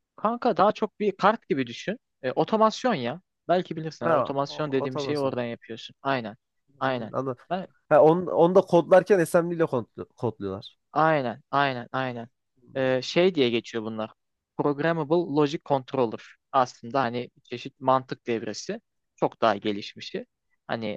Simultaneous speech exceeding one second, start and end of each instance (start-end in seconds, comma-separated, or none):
4.0-5.4